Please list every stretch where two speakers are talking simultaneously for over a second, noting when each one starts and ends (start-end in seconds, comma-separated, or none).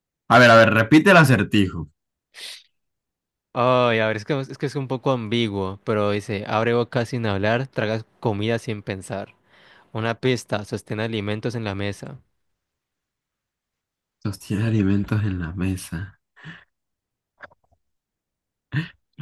none